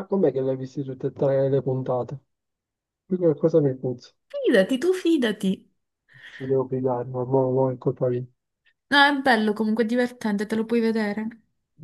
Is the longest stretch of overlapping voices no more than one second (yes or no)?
yes